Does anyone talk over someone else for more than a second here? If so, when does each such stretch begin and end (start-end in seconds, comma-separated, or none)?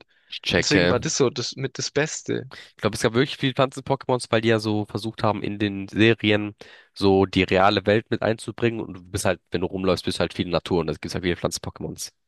none